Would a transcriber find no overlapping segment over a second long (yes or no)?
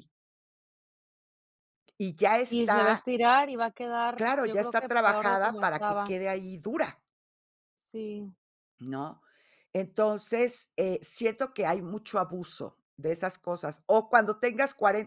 no